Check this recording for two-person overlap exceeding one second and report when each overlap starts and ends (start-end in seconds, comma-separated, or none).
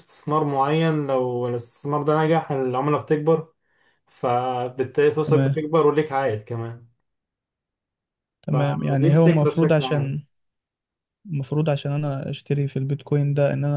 8.5-10.2